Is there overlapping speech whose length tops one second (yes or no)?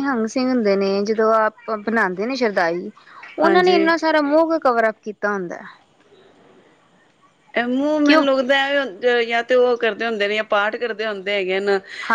no